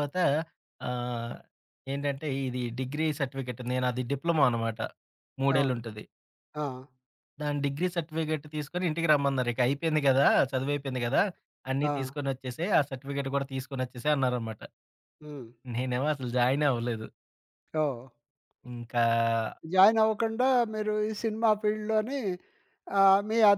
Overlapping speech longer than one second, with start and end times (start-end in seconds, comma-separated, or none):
none